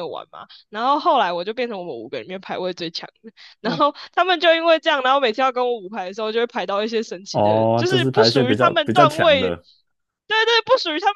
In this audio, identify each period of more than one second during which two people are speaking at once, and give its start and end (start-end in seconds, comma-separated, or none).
7.3-9.5